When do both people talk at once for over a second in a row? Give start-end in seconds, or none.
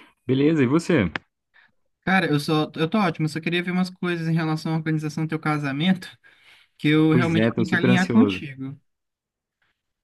7.1-8.4